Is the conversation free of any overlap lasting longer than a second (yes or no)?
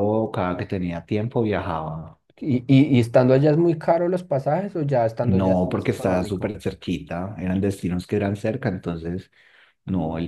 no